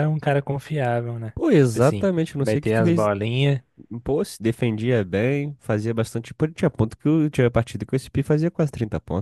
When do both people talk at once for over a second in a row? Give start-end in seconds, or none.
1.4-3.1